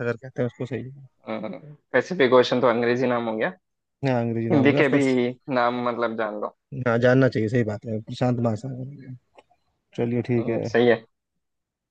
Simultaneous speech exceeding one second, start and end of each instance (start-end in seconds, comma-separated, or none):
none